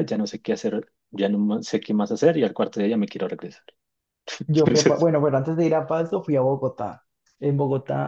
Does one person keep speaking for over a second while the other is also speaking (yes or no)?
no